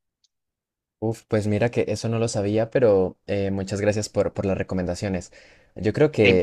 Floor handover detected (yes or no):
yes